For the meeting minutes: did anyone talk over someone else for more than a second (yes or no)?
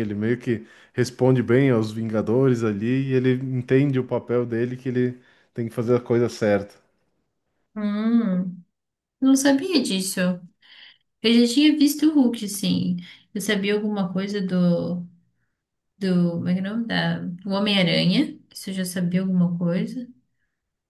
no